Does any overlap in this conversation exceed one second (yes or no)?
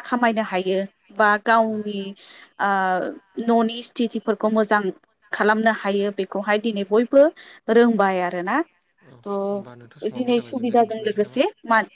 yes